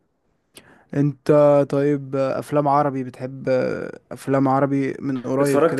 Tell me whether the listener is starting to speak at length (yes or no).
yes